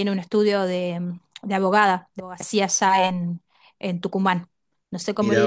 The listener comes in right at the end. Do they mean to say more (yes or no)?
no